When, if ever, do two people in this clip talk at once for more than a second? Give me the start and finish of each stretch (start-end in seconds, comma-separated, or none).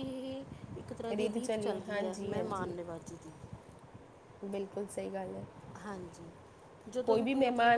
1.4-2.7